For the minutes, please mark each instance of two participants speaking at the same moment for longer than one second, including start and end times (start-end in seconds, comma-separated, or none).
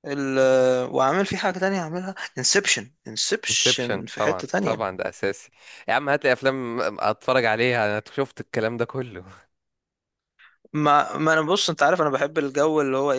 3.5-4.8